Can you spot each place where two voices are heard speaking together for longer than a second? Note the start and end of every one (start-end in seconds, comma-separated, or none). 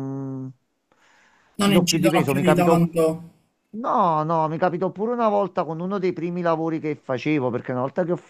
1.6-2.9